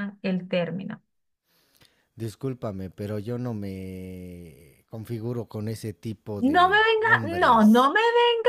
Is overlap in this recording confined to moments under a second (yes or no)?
no